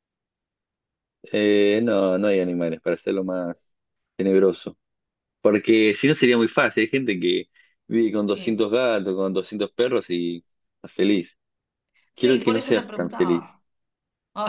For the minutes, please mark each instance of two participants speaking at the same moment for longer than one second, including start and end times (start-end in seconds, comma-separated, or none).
12.2-13.6